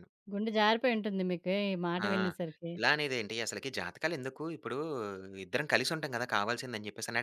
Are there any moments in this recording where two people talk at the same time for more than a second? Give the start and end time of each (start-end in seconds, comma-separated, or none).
none